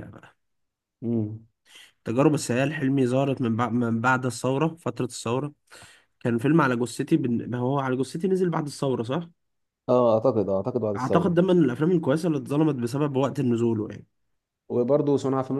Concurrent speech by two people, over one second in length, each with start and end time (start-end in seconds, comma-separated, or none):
none